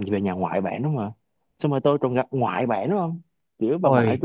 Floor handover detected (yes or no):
no